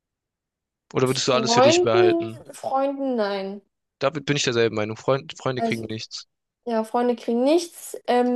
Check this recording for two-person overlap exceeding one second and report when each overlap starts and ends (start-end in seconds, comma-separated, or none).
1.0-2.4